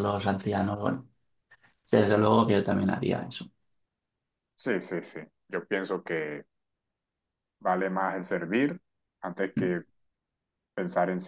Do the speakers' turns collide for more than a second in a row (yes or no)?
no